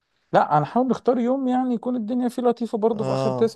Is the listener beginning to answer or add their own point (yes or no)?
no